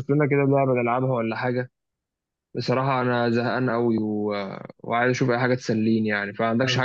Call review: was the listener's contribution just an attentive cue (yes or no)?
no